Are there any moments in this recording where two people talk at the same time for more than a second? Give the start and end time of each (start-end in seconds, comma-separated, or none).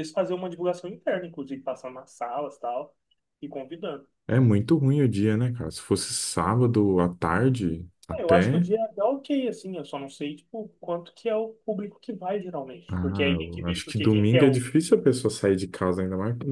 12.9-14.6